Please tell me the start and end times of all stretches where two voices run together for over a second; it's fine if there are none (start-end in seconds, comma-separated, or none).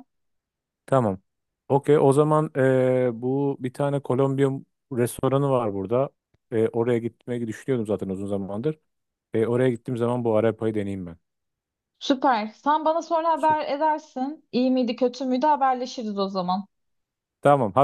none